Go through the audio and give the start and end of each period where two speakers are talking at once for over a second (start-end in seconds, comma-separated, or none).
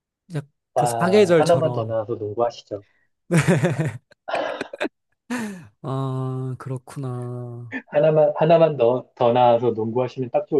0.7-1.9